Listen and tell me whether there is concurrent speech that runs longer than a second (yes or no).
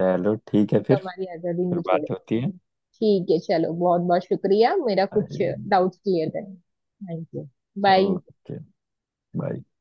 no